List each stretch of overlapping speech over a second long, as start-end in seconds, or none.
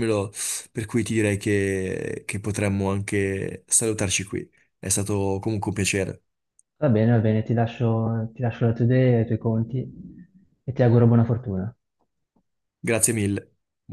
none